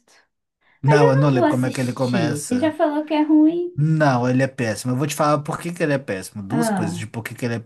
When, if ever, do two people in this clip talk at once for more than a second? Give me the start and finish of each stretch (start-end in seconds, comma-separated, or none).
0.8-2.7